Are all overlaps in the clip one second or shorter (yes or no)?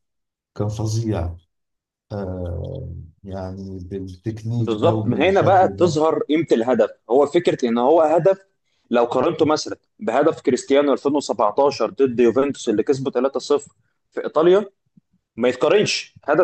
no